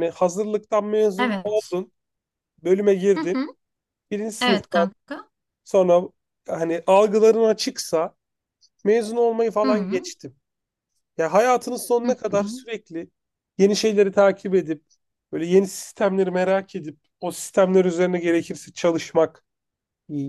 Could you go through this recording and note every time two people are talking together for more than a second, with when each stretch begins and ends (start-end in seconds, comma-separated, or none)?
none